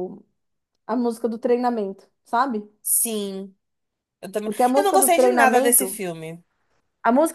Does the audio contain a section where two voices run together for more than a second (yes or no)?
yes